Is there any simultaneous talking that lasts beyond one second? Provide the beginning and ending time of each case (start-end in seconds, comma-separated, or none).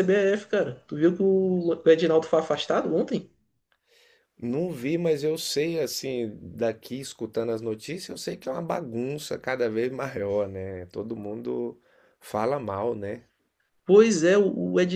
none